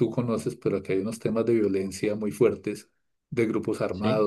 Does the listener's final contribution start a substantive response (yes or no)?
no